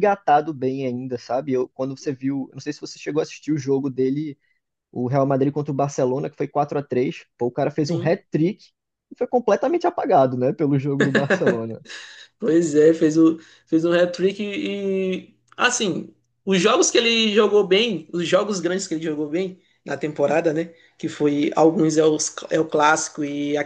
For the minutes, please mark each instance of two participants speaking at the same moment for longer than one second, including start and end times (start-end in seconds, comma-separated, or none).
none